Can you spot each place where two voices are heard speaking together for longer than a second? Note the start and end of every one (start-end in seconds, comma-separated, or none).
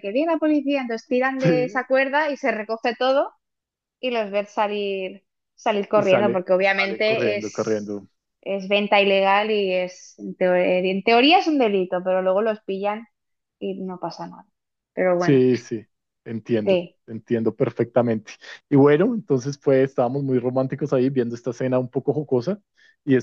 5.9-8.0